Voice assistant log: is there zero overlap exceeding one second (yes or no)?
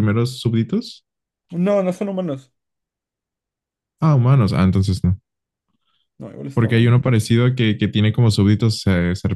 yes